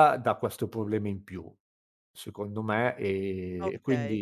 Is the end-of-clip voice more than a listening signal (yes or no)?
no